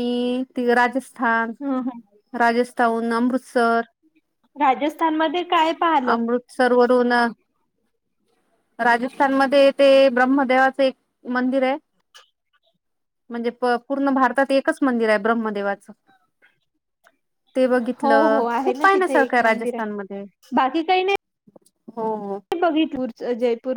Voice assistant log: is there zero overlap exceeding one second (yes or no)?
no